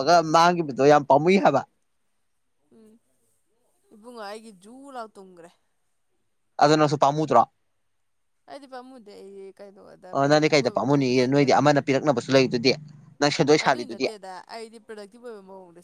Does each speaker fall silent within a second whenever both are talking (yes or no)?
no